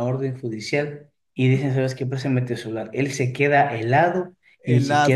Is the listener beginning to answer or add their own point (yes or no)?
no